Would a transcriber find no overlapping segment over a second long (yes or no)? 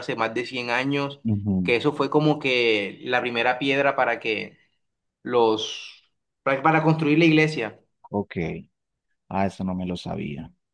yes